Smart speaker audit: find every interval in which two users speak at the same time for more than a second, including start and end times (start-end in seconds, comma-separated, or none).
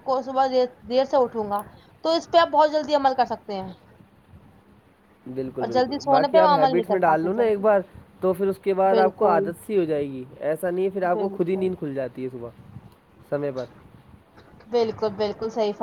5.6-7.6